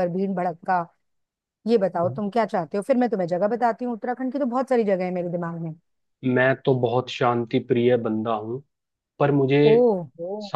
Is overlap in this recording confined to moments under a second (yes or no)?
yes